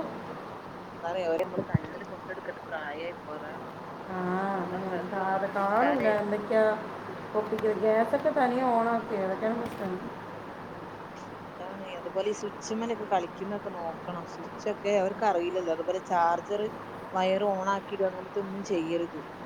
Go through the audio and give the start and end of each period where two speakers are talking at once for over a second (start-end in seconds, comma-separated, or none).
4.6-6.1